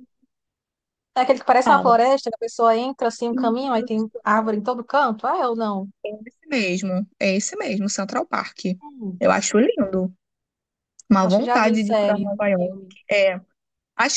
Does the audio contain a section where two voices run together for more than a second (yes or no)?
yes